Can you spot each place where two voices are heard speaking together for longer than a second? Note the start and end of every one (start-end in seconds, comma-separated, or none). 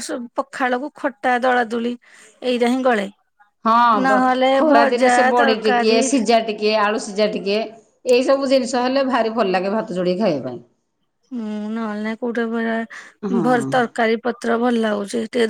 4.1-6.0